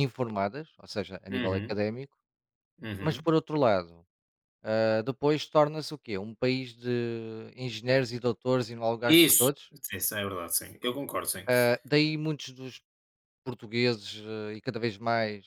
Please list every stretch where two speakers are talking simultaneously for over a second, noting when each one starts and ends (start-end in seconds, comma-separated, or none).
none